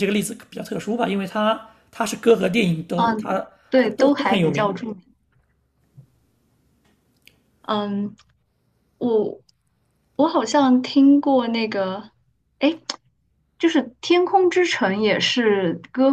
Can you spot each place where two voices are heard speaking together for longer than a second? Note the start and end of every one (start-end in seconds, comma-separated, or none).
3.0-4.8